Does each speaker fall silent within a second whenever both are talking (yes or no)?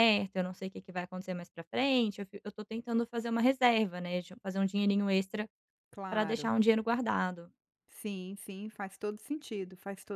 yes